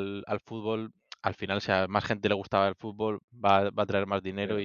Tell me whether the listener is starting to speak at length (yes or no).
yes